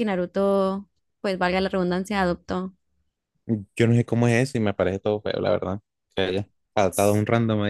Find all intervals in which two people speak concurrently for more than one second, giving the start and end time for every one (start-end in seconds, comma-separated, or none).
none